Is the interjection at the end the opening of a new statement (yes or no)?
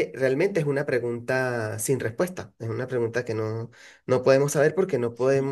no